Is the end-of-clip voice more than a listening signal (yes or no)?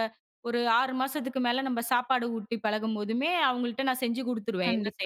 yes